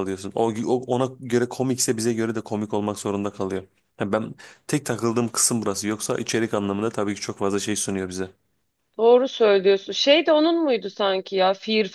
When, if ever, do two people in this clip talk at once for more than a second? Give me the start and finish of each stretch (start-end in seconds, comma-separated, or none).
none